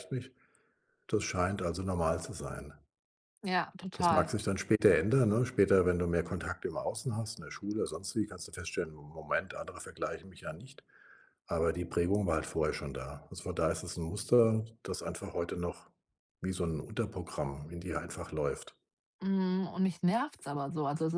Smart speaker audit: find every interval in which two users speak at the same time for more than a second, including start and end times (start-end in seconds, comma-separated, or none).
none